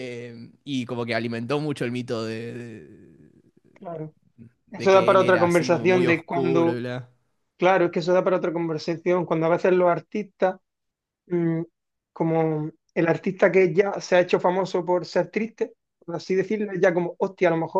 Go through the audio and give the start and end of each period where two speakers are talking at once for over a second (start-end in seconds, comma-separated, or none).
4.8-6.8